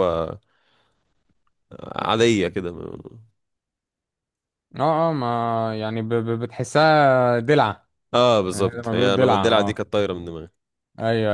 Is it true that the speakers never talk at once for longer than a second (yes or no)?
no